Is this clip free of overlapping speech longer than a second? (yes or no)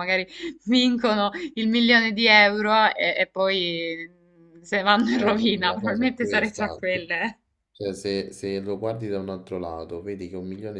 no